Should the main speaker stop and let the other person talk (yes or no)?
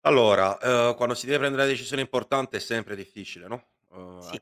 no